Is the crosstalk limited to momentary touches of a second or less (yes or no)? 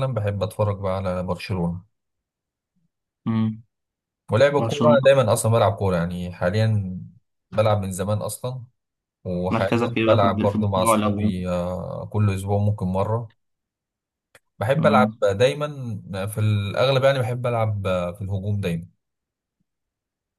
no